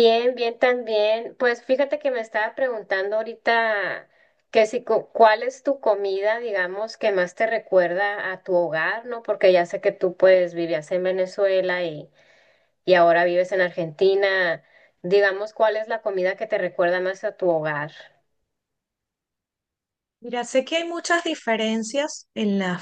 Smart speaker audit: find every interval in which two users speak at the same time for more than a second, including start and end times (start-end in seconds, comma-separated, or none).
none